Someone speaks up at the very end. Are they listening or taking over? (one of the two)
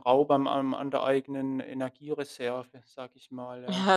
taking over